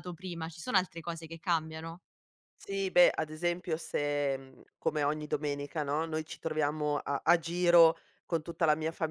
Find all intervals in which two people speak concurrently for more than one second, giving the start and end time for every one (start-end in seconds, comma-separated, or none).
none